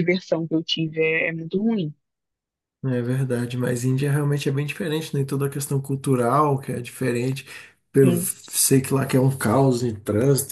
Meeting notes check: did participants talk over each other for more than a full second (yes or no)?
no